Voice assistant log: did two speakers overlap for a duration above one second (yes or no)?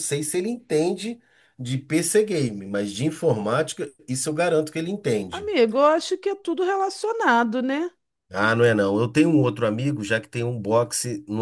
no